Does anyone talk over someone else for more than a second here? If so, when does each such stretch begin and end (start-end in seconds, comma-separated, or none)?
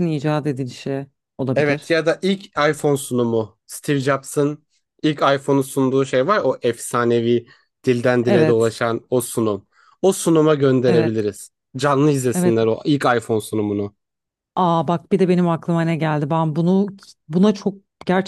none